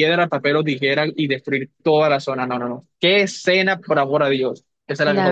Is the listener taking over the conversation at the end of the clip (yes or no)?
yes